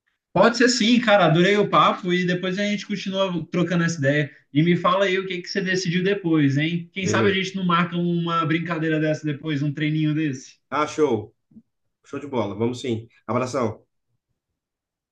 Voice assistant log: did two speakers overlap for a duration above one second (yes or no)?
no